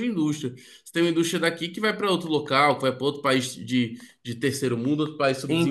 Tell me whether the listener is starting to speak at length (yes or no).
yes